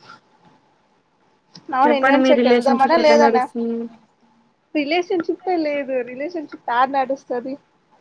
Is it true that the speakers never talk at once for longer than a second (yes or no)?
no